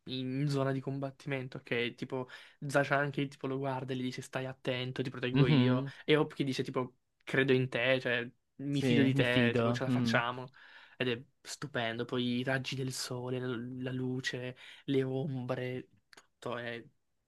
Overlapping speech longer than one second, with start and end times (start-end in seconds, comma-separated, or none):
8.7-10.2